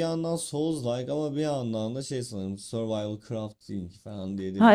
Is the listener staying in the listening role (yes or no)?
no